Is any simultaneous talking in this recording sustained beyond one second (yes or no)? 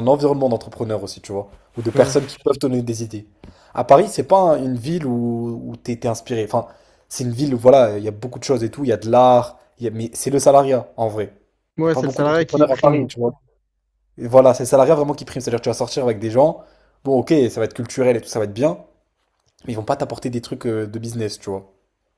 yes